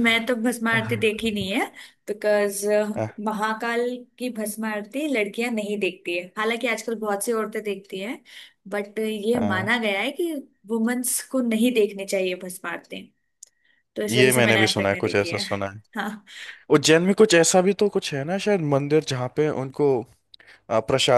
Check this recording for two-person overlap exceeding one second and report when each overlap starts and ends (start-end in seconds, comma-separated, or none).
14.1-15.4